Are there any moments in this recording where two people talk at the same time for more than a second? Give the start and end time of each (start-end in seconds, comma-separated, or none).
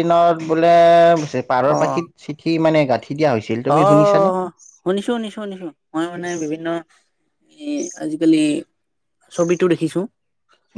none